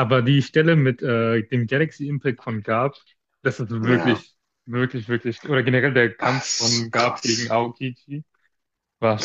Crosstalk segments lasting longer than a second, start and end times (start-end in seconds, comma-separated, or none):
6.2-7.5